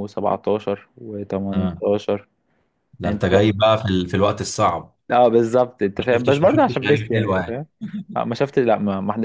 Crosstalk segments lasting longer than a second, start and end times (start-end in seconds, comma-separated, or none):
6.0-7.6